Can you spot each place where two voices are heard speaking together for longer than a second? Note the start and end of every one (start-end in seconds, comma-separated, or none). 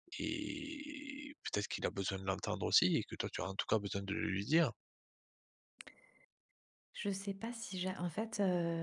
none